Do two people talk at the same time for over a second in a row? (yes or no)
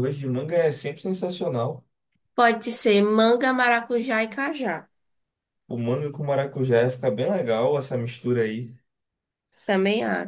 no